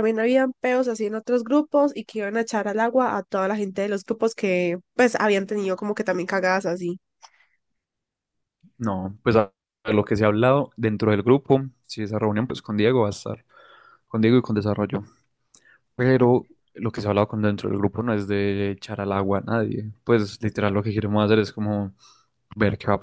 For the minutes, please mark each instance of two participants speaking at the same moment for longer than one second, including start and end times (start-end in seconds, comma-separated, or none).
none